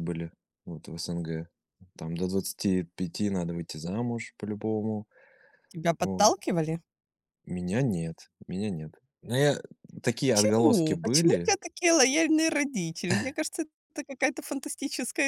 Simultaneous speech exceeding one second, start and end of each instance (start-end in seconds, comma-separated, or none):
10.3-11.5